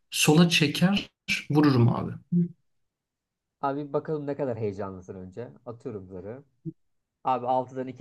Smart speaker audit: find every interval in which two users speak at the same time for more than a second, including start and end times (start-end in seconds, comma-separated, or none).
none